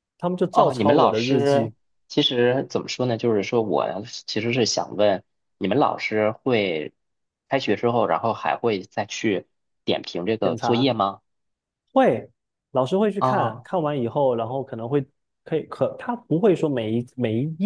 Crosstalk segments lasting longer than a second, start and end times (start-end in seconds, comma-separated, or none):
0.5-1.7